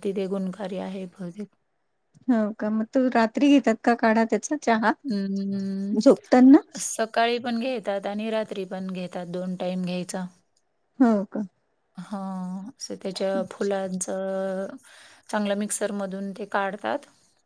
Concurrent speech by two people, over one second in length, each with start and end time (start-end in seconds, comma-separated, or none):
none